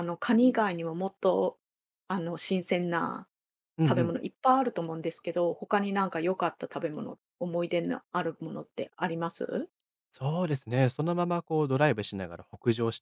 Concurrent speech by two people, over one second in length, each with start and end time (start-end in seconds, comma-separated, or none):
none